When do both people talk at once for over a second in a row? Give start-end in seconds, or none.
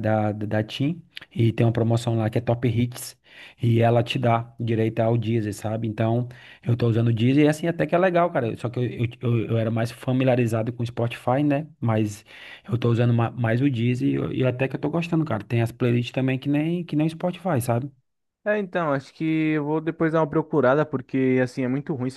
none